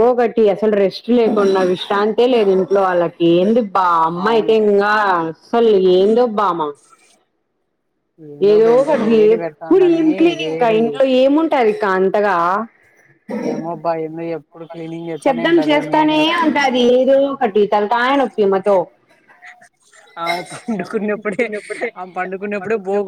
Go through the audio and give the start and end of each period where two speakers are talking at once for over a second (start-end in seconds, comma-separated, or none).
8.5-10.8